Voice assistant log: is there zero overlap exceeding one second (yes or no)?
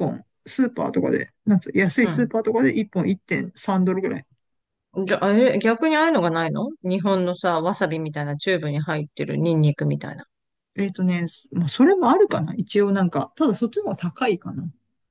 yes